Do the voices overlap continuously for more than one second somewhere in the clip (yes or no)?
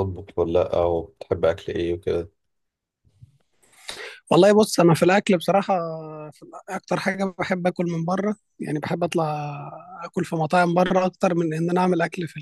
no